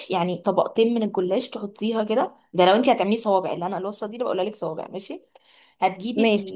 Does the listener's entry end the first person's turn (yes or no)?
no